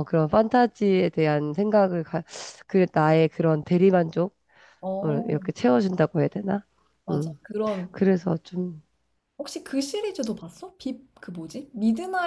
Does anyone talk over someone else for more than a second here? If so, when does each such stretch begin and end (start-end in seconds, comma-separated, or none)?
none